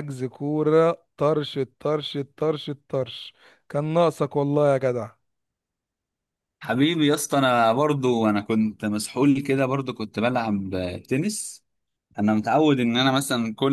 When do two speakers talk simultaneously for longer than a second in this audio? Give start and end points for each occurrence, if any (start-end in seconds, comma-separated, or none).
none